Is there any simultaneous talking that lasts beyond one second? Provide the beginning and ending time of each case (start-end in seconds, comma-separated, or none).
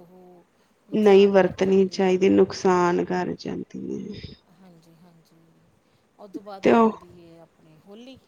1.0-3.2